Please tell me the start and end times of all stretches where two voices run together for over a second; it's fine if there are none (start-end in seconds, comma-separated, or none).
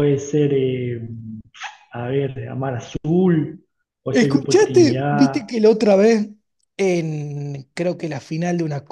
4.1-5.5